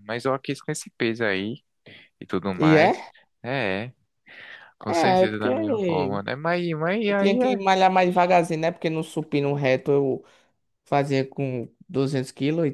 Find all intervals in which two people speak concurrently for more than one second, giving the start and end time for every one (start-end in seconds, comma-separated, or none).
4.9-6.2